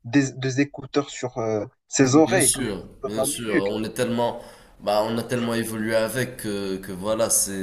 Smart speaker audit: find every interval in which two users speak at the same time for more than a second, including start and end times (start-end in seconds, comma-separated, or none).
2.1-3.7